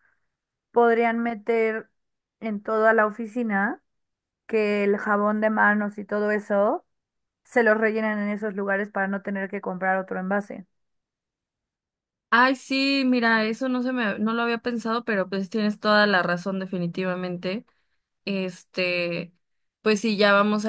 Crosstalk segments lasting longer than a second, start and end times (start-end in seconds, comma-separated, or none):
none